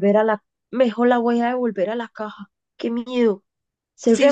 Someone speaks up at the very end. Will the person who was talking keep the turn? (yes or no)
no